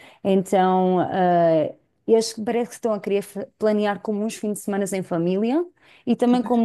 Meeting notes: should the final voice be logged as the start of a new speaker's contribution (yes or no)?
no